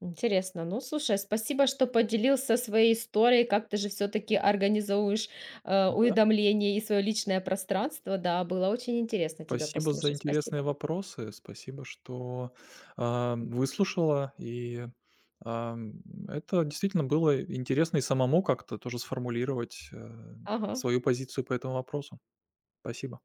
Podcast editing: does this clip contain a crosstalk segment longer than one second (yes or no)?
yes